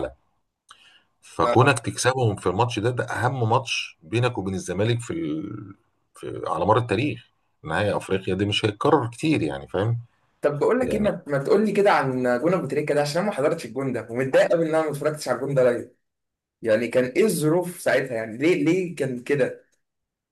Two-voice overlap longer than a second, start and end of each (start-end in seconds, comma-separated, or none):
none